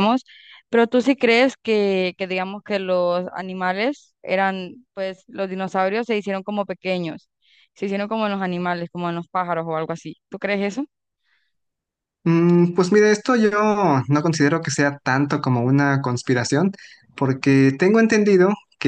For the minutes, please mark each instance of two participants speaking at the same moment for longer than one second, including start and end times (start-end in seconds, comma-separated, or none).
none